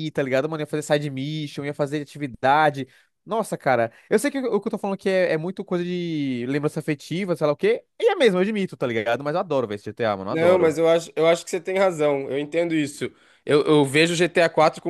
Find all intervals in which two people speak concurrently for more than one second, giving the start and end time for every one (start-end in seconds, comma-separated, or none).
none